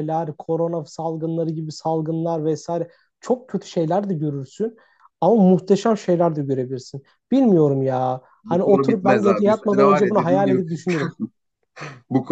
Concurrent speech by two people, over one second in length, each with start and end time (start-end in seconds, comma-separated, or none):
8.4-10.6